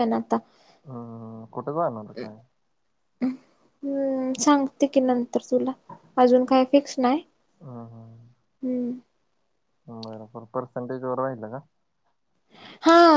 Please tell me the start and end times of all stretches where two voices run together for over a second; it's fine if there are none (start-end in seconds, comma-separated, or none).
none